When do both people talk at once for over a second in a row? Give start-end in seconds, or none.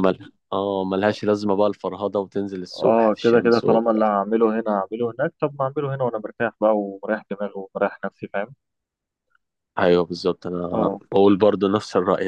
2.8-4.1